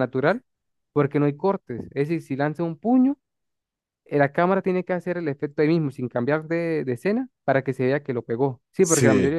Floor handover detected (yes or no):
no